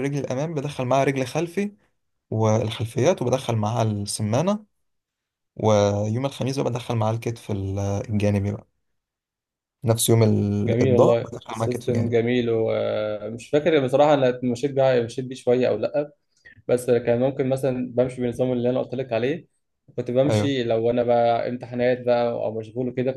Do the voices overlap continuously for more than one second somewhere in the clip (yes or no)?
yes